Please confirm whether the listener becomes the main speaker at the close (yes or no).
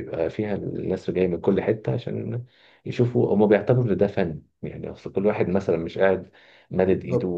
no